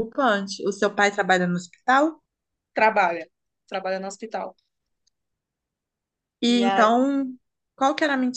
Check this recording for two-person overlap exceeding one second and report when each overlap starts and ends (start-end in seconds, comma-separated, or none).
none